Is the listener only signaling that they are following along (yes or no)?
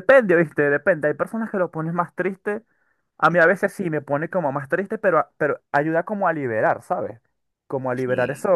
yes